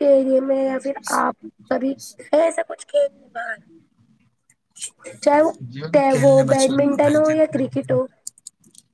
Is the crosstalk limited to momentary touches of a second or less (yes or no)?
no